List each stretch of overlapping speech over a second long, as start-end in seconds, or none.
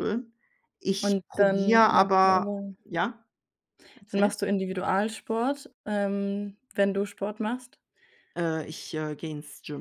1.0-2.7